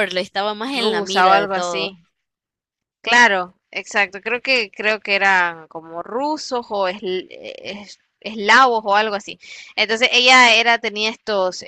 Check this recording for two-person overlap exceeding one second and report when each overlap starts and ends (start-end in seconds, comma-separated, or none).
0.7-2.0